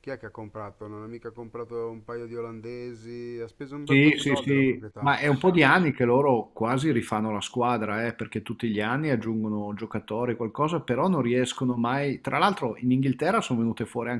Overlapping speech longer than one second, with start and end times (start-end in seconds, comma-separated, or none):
3.8-5.1